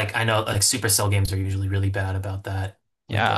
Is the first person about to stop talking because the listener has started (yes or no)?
yes